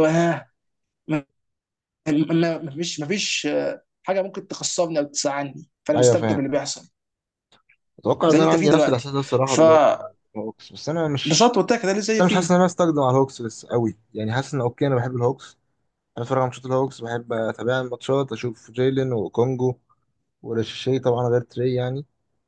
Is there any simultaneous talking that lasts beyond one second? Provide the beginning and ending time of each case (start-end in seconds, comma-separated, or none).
8.3-10.0